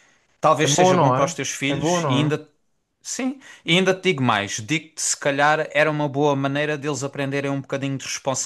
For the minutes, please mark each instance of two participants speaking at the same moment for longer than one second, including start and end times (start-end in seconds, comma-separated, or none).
0.6-2.4